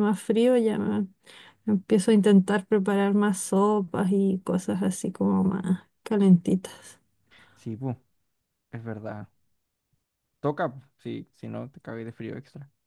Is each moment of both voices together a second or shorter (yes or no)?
yes